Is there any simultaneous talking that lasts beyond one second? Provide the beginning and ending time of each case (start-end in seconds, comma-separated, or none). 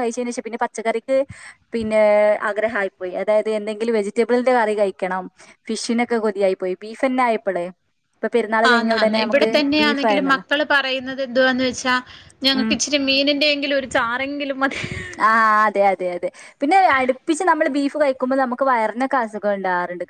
8.7-10.4